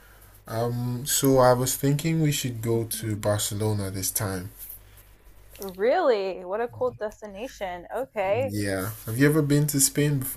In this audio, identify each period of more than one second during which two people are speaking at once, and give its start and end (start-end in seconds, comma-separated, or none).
none